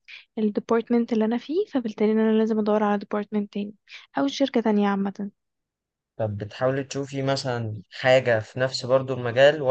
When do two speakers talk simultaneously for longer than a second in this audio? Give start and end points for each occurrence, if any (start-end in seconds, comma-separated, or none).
none